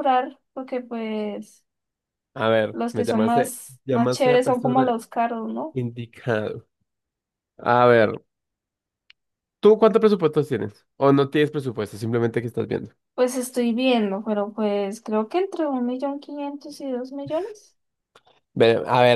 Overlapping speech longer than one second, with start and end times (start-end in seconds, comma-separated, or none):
2.7-5.0